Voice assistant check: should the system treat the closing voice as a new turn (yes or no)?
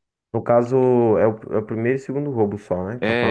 yes